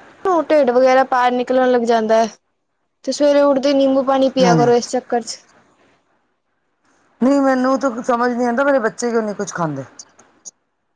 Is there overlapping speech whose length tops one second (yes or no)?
no